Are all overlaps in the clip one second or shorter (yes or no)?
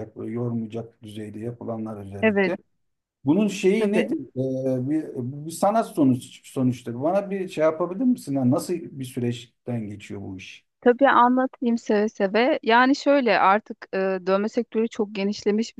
yes